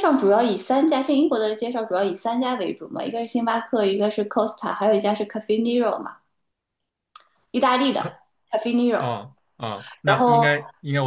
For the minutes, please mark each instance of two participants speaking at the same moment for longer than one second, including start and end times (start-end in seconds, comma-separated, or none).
none